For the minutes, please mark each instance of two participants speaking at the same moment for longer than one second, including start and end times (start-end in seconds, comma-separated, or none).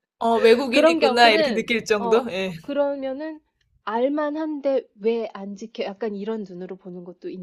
0.7-2.5